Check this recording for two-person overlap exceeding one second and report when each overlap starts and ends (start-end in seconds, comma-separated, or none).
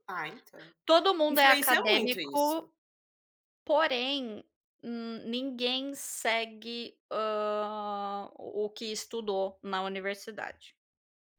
1.3-2.6